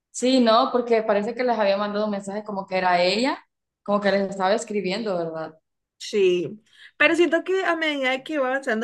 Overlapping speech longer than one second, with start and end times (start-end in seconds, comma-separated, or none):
none